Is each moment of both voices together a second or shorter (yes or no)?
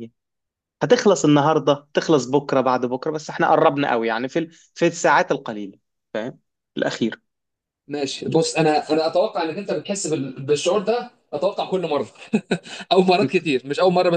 yes